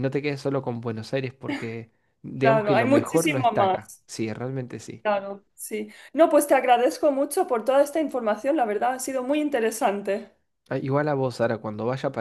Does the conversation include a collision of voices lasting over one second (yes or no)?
yes